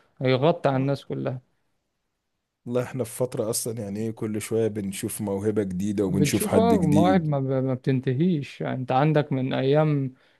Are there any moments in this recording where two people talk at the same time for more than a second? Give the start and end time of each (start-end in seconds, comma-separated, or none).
6.1-7.3